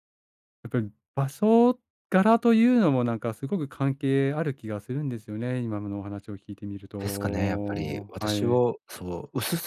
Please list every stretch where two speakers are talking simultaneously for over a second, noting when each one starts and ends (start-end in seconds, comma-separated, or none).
7.0-8.6